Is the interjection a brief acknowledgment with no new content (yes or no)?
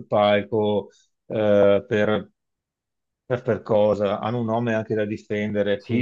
yes